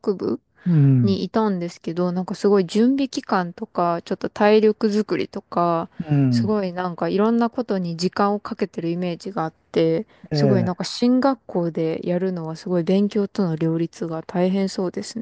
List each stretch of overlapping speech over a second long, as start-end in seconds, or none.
none